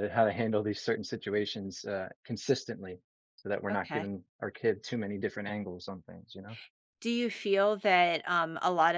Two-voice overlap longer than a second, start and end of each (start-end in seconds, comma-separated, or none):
none